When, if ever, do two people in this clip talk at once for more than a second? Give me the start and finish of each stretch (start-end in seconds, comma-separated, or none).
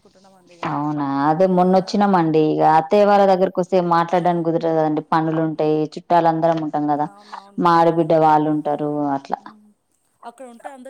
none